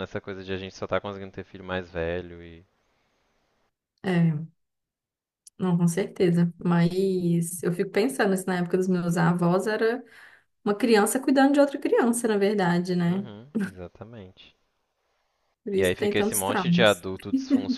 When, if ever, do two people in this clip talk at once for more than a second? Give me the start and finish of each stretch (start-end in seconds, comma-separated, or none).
15.8-17.0